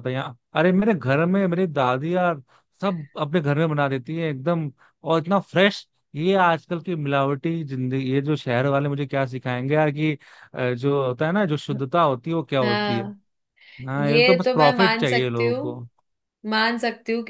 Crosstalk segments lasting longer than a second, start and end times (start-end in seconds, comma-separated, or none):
14.0-15.8